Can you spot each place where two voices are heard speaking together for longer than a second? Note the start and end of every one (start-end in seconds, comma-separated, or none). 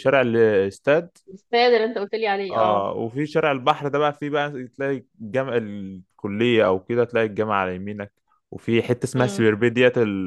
none